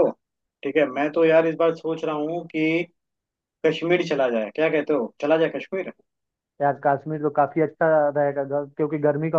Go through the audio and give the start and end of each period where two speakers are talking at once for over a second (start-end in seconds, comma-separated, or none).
none